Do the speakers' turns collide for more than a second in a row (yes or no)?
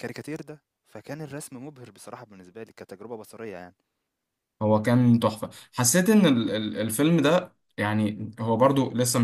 no